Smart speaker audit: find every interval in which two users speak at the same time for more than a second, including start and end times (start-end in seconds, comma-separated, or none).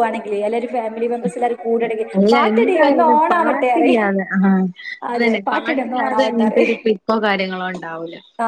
2.2-4.0